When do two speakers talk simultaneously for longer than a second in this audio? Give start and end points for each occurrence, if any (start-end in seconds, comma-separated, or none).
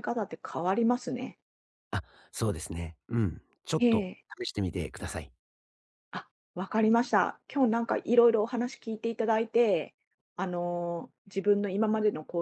none